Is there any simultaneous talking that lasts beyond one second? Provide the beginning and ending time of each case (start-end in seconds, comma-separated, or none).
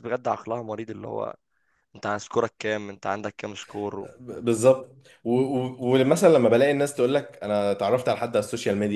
none